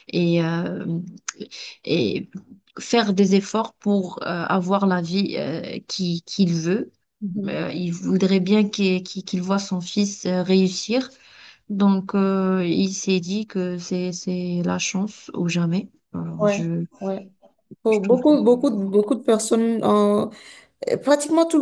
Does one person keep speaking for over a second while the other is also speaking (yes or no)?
no